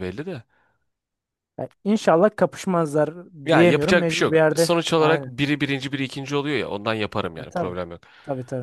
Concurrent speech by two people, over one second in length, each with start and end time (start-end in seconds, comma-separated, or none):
3.5-5.3